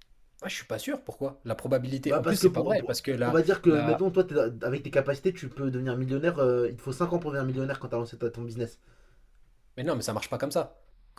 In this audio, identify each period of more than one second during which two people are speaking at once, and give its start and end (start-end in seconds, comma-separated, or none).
2.0-4.0